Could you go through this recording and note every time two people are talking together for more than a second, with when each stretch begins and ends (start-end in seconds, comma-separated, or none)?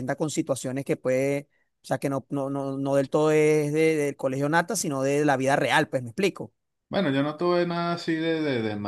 none